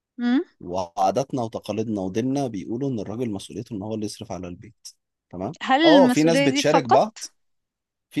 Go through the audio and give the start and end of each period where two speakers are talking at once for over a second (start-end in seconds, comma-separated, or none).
5.6-7.0